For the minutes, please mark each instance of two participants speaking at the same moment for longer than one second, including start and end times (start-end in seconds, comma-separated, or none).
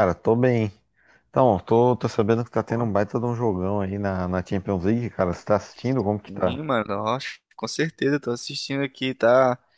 none